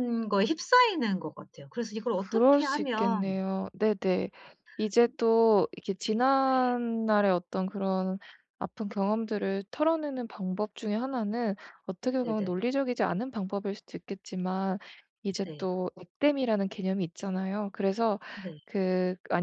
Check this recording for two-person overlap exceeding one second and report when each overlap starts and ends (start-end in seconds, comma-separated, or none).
2.1-3.4